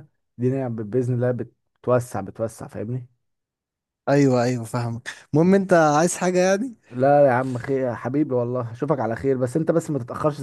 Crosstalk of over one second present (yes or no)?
no